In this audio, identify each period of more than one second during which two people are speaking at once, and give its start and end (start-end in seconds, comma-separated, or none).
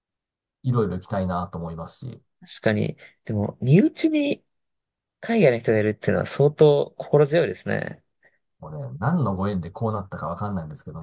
none